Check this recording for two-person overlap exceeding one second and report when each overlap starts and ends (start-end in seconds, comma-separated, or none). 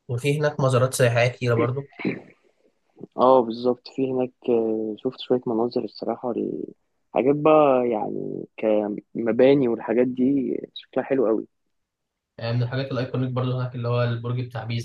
none